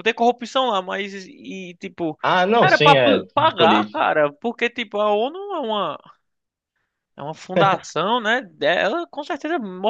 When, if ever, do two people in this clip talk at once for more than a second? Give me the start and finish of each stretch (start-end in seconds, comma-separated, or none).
2.6-4.1